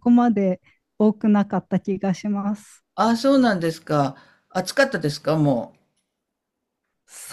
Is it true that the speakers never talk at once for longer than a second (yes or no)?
yes